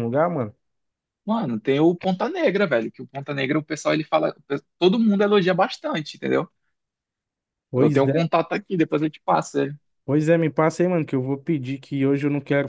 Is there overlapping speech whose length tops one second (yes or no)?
no